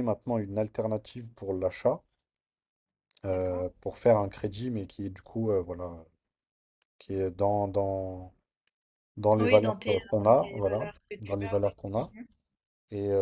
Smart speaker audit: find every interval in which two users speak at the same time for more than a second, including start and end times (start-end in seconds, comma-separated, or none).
9.4-12.1